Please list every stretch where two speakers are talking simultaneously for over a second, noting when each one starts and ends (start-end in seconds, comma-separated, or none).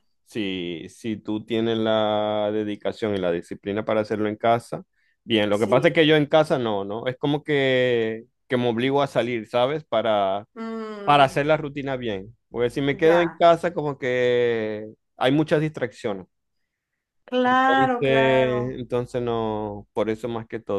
17.4-18.8